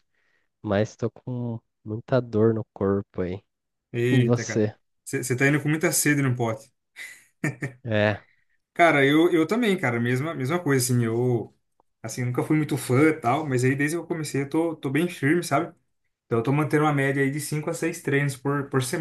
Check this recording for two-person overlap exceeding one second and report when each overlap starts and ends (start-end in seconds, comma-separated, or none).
none